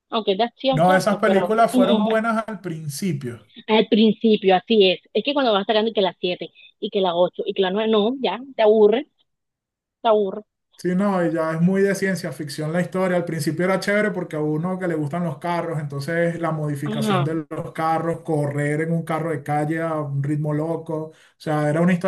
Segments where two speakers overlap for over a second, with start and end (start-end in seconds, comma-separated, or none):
0.7-2.1